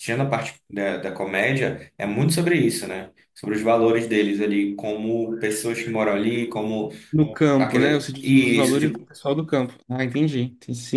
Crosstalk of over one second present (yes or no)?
yes